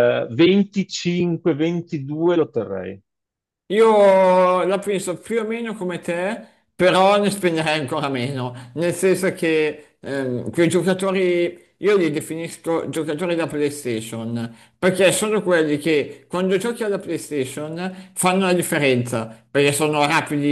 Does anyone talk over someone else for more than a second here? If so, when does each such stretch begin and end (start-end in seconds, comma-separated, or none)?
none